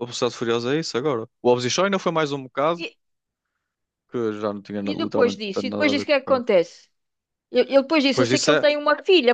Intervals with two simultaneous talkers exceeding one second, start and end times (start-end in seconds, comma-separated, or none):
4.9-6.5